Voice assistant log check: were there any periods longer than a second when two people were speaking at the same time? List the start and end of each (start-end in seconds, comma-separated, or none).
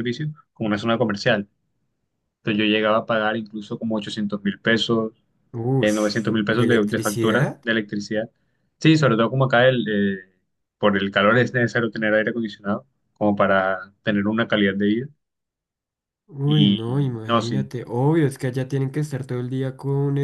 5.8-7.6, 16.5-17.7